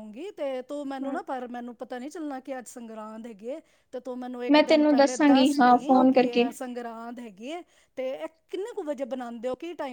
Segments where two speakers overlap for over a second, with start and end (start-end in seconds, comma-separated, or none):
4.5-6.4